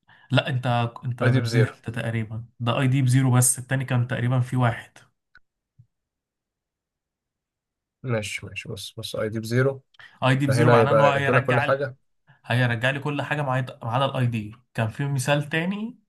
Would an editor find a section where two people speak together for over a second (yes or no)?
yes